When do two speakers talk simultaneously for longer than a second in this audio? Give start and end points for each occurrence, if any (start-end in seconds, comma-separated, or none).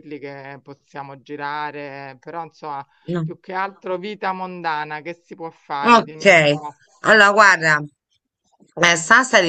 none